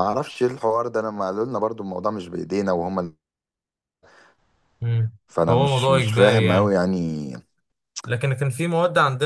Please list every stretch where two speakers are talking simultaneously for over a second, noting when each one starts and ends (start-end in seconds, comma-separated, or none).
5.5-6.8